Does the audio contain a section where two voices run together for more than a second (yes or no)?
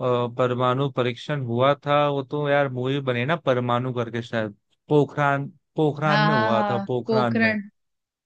yes